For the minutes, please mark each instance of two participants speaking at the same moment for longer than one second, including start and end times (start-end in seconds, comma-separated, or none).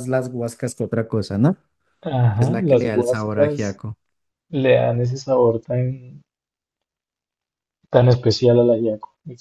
2.4-3.8